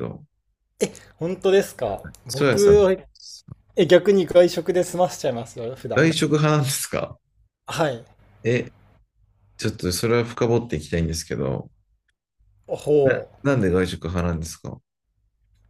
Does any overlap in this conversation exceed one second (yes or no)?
no